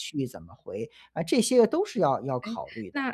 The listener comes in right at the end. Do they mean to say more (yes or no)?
yes